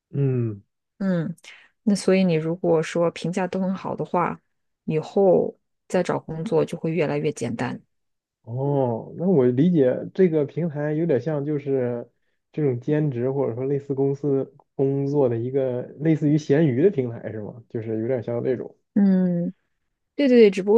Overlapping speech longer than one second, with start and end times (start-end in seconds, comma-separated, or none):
none